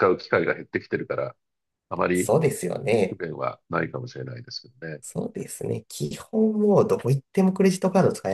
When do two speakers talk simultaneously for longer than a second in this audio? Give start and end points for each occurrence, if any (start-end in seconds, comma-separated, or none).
none